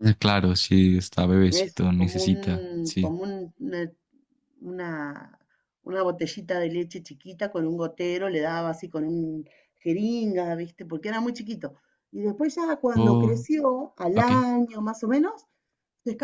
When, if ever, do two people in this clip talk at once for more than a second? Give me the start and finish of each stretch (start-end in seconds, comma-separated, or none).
1.5-3.1